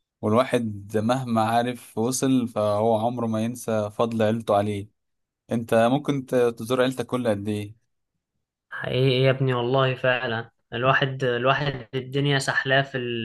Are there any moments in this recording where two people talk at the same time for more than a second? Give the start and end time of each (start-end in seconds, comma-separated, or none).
none